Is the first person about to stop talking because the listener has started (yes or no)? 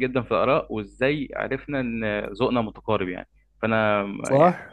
yes